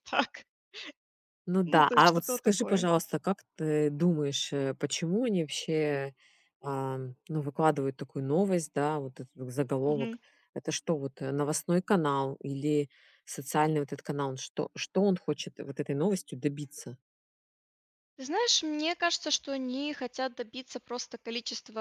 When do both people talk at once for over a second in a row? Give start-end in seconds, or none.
1.6-2.9